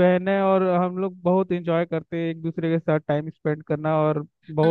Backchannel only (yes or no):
no